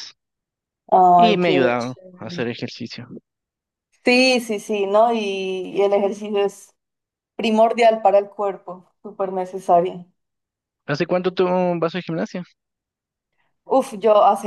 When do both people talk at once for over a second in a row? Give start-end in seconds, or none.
1.2-2.5